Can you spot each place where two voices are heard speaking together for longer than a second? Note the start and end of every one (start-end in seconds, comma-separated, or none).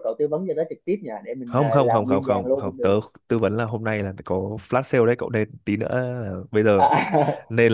1.5-2.9